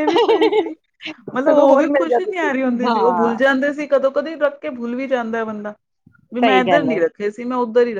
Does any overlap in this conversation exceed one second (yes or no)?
yes